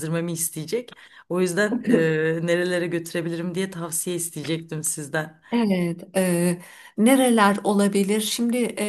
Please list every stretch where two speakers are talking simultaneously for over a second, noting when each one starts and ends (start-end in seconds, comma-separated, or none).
none